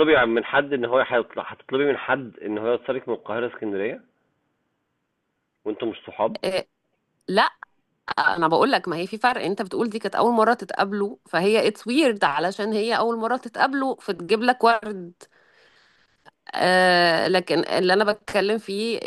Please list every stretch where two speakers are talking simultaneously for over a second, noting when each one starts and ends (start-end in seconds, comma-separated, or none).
none